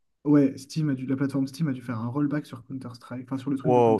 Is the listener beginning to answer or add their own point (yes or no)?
yes